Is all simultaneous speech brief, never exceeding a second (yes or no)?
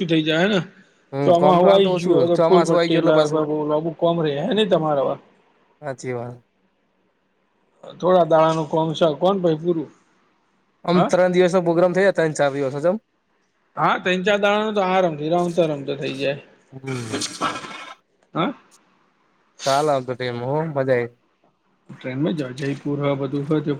no